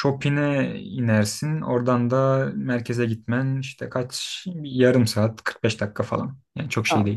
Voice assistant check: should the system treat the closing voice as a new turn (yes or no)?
yes